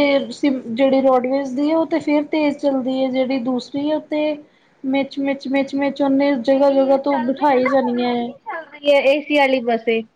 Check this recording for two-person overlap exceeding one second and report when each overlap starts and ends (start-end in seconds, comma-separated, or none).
7.1-8.3